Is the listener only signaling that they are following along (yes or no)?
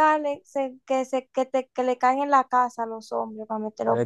no